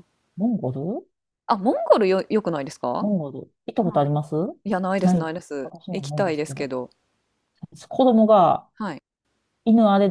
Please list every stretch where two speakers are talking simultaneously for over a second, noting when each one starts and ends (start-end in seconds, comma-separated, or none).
5.0-6.7